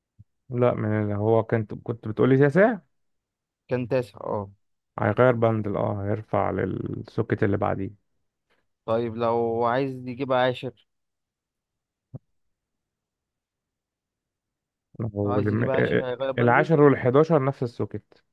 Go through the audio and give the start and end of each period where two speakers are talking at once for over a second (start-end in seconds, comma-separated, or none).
15.2-16.7